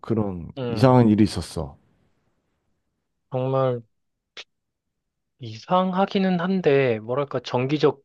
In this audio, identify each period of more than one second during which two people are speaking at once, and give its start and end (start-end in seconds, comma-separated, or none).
none